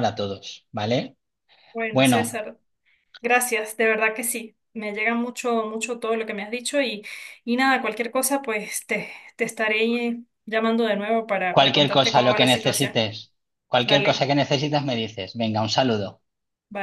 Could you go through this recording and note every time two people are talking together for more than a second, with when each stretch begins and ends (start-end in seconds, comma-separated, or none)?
11.5-12.9